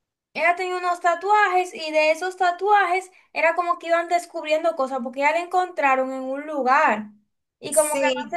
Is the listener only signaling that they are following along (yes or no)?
no